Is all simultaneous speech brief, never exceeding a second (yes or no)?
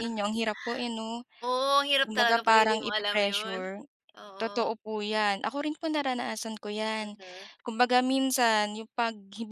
no